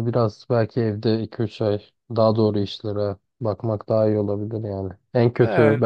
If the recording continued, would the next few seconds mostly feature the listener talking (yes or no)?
no